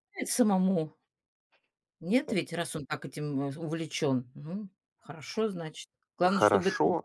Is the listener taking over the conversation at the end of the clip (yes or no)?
yes